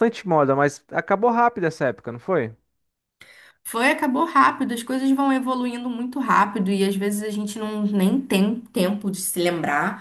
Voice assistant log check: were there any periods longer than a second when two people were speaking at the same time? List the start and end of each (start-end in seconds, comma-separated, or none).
none